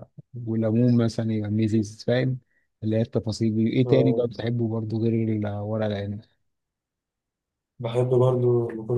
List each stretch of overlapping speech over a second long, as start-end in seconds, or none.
none